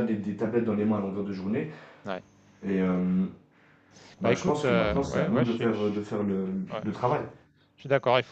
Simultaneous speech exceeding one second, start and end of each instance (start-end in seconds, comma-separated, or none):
4.2-6.1